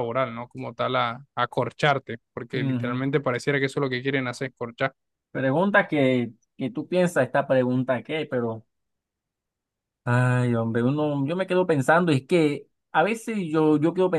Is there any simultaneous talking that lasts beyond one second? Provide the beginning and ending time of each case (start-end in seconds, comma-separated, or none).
none